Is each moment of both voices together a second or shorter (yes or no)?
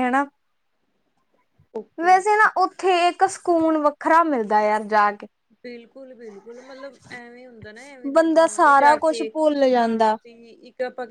no